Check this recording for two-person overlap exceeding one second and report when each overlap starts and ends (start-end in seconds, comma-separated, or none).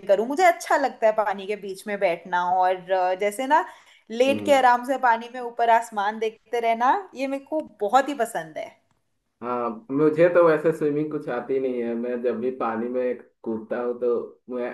none